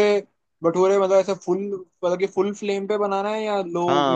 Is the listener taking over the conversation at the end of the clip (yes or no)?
yes